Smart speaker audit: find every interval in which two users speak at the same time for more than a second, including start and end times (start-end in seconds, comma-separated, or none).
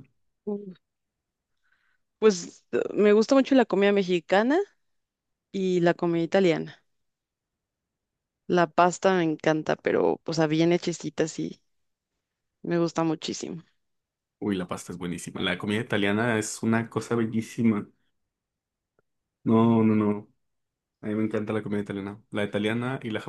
none